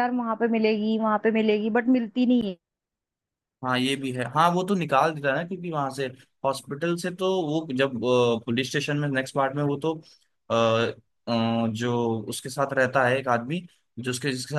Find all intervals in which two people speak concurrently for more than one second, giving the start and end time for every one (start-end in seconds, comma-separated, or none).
none